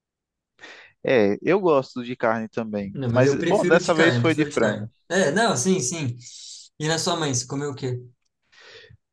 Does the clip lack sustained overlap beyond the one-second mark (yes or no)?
no